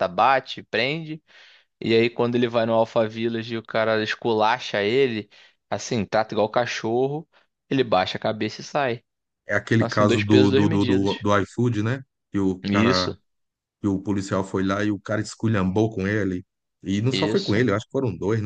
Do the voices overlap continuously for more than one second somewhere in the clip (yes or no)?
yes